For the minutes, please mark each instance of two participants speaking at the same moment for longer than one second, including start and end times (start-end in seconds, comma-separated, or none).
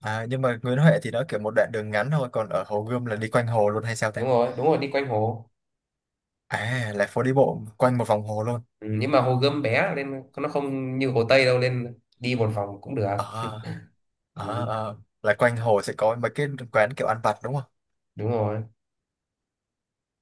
none